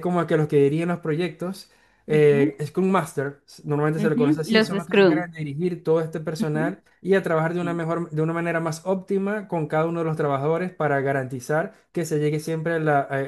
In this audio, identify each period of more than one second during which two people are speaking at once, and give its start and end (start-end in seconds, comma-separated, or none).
4.0-5.2